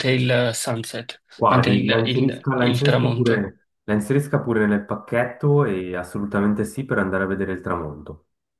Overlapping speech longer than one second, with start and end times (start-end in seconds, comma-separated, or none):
1.3-3.5